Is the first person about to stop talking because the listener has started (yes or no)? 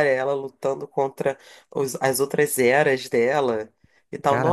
no